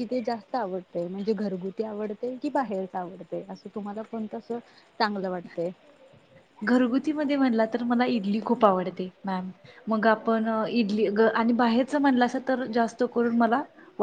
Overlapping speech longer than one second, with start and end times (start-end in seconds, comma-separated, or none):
none